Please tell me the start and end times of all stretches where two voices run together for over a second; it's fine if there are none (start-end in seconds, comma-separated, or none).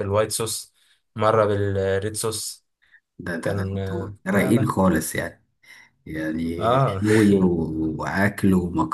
3.4-4.7